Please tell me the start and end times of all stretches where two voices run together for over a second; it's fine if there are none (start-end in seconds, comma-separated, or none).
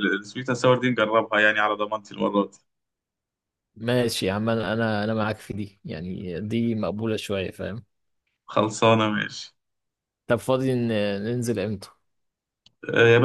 none